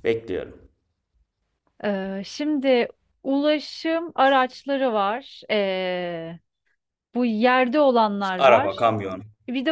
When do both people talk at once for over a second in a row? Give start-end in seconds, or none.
none